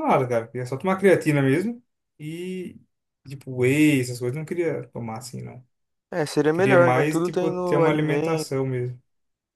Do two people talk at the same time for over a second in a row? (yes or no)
yes